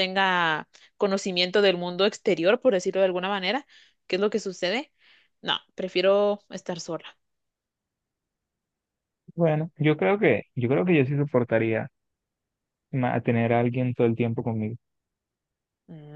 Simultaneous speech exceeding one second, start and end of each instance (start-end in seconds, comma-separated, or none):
none